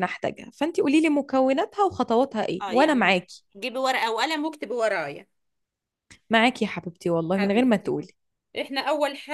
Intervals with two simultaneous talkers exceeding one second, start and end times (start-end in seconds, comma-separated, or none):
none